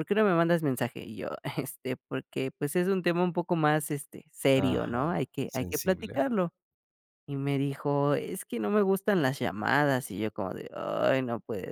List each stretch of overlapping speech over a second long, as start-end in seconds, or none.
4.6-6.2